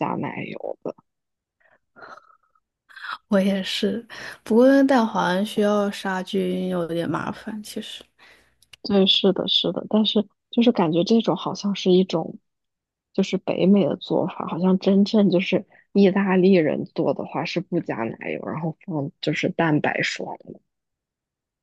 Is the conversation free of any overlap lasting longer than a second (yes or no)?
yes